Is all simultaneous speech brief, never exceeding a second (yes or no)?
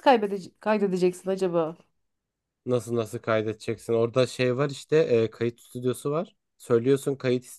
yes